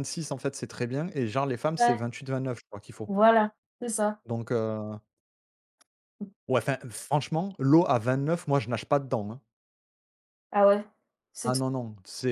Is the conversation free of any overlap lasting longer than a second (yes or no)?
yes